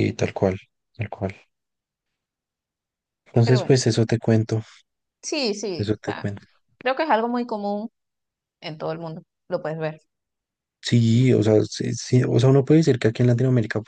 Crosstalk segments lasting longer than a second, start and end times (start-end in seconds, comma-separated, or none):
none